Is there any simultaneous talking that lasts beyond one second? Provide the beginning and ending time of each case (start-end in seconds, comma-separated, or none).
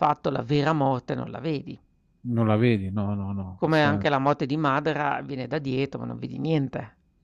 none